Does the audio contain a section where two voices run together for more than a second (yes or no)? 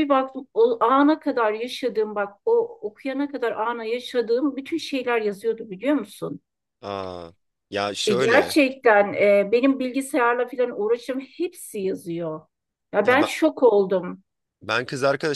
no